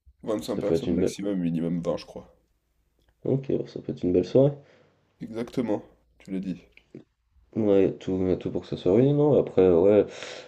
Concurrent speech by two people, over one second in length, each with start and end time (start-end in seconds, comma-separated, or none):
none